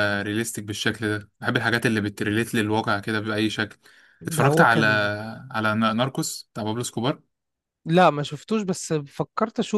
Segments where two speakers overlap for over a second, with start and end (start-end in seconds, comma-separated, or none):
none